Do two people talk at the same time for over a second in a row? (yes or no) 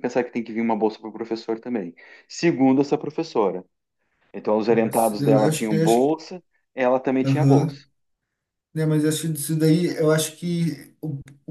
yes